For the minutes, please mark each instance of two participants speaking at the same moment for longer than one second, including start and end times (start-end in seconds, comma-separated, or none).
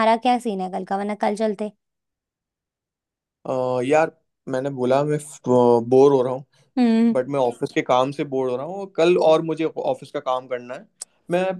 none